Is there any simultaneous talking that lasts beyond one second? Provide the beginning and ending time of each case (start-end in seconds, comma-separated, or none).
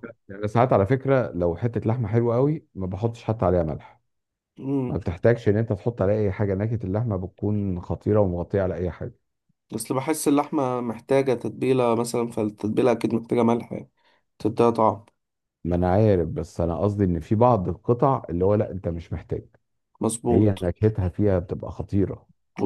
none